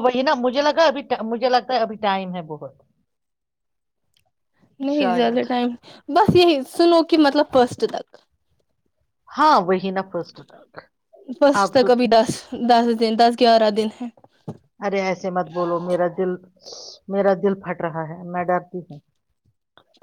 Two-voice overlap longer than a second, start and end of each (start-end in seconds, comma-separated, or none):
none